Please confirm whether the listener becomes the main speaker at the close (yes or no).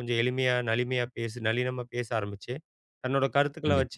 no